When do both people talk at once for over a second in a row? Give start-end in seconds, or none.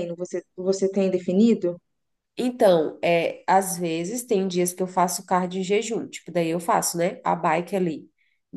none